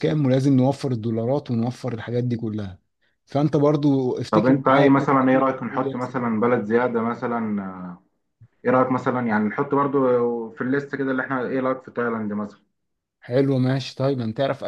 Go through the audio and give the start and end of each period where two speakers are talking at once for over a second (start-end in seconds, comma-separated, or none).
4.3-6.2